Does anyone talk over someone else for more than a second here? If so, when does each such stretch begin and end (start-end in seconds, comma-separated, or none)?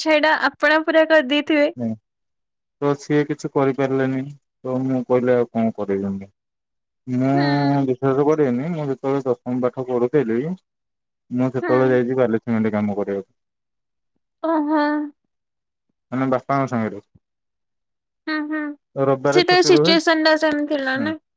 none